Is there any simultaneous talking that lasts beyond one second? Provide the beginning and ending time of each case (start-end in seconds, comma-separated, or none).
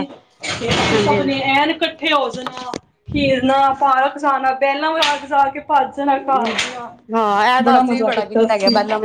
none